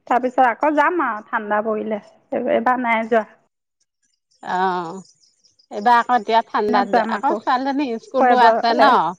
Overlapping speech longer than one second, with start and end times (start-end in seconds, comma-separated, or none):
none